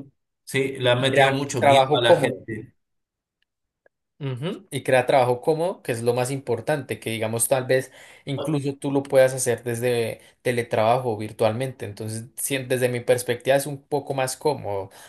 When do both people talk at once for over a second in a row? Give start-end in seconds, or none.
0.8-2.5